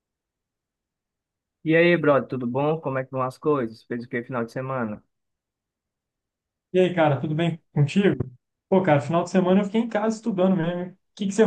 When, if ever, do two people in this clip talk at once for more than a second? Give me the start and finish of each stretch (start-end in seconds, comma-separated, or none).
none